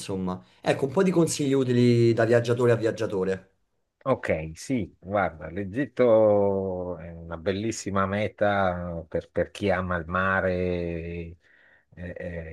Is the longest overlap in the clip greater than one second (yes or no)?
no